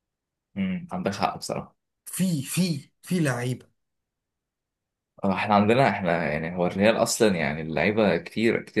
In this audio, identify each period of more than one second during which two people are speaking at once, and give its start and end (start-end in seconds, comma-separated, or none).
none